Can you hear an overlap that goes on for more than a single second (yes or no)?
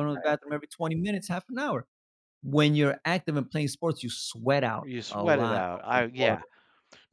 yes